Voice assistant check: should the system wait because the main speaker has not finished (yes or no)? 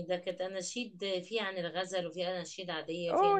no